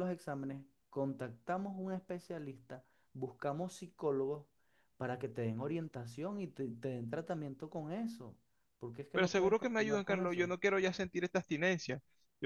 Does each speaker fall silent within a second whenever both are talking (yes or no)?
no